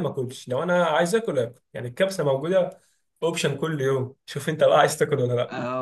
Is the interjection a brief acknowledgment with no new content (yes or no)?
no